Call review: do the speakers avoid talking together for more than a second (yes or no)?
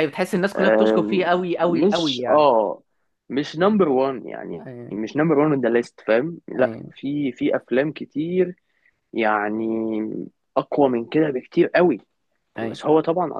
no